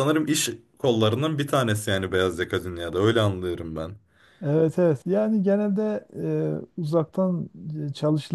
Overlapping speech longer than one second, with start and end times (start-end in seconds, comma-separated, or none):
none